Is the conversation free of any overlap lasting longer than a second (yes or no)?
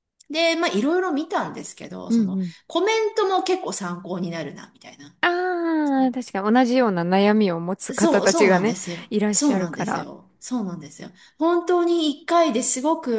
no